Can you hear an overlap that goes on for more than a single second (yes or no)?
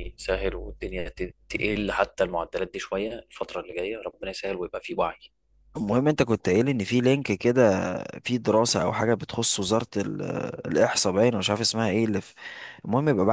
no